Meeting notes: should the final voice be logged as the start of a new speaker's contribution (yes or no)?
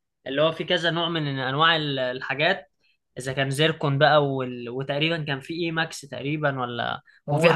yes